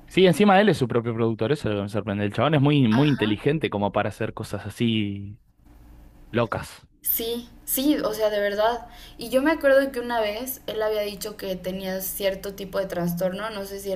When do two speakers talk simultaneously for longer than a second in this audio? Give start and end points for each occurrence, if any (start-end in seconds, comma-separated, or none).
none